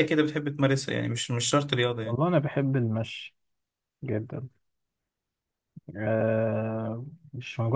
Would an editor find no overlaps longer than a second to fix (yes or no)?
yes